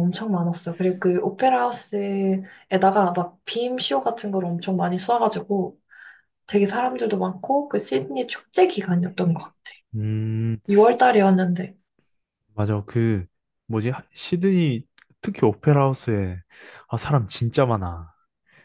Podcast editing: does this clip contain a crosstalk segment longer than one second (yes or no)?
no